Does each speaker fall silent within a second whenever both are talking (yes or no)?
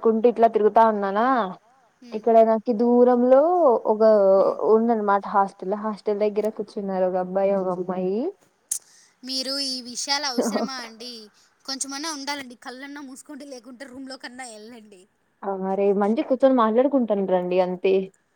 yes